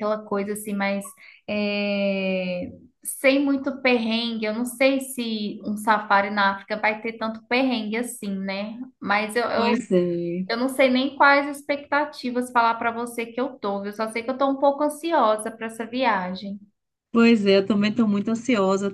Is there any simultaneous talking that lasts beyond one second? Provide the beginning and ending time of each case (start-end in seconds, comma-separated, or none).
none